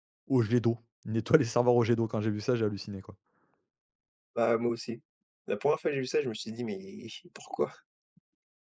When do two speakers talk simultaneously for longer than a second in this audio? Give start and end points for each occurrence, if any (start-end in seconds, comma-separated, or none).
none